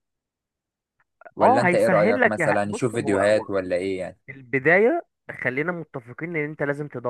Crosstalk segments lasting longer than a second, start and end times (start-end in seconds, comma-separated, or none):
1.4-3.3